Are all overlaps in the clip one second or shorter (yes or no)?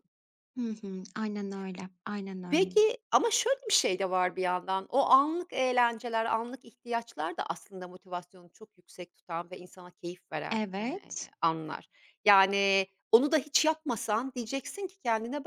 yes